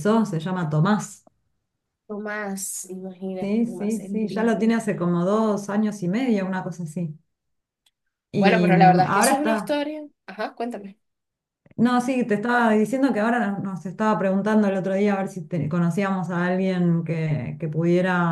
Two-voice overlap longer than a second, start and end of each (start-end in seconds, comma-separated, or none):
3.4-4.7, 8.3-9.8